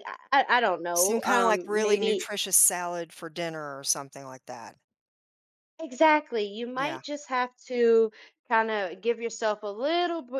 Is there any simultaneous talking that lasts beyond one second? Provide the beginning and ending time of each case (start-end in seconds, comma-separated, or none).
0.9-2.3